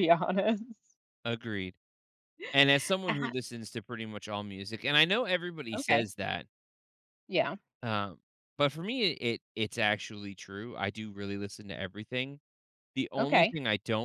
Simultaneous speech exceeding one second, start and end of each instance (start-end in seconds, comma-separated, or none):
none